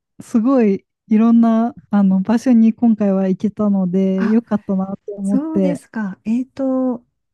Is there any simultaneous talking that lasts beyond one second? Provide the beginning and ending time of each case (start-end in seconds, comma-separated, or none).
none